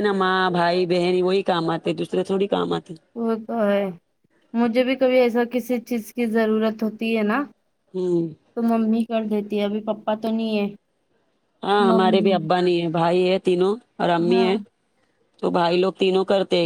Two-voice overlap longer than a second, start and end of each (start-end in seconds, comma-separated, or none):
none